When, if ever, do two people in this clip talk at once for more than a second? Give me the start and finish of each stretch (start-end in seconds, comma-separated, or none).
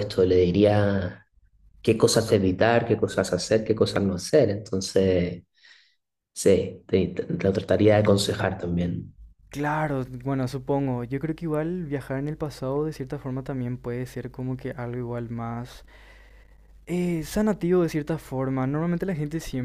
none